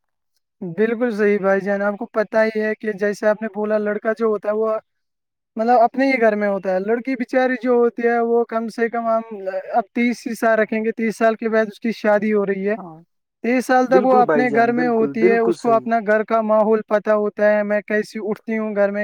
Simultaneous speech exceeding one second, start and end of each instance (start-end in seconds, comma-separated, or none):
13.9-15.8